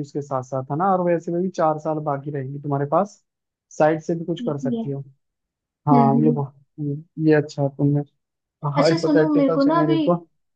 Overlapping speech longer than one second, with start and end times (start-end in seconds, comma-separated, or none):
8.8-10.0